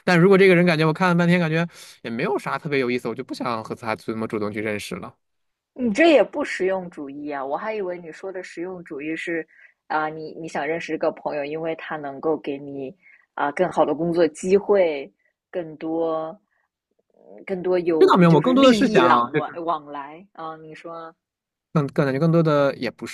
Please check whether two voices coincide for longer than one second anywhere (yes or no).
yes